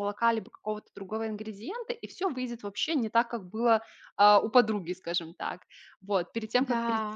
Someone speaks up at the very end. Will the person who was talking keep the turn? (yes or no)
yes